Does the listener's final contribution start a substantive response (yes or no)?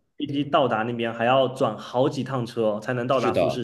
yes